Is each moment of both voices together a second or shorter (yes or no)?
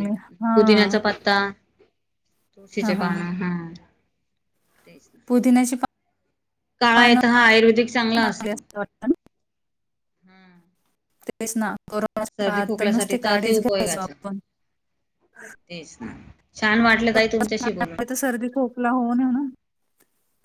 no